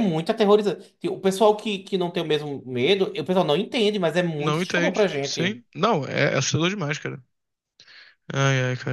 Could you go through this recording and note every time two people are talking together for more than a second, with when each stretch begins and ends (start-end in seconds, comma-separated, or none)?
4.4-5.6